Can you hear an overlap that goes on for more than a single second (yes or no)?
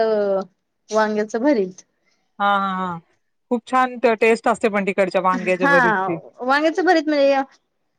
no